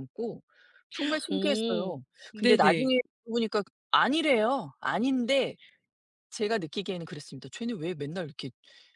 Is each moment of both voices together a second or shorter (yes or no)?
no